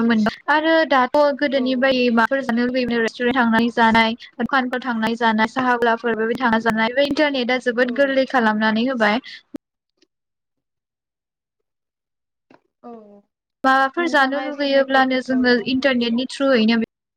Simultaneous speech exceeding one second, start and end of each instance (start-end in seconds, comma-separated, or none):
14.0-16.1